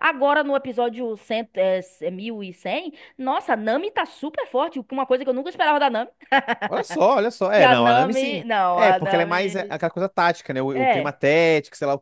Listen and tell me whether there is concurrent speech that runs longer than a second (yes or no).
yes